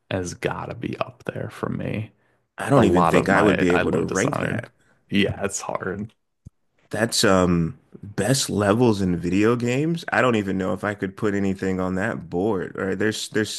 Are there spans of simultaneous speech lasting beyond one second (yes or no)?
yes